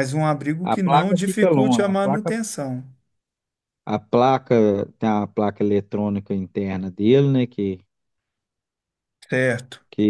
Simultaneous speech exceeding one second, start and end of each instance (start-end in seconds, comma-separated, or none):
0.6-2.3